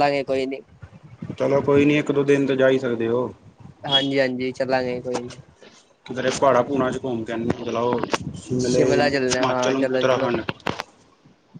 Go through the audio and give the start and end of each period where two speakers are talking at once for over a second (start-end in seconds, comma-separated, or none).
8.6-10.3